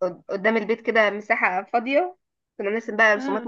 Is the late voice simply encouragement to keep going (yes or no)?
yes